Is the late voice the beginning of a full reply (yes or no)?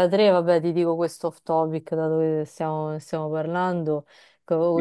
no